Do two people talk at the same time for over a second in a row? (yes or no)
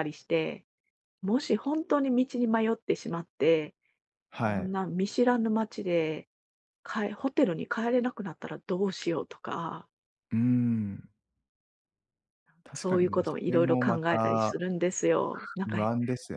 yes